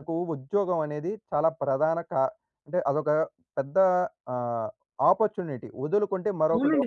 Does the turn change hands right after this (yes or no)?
yes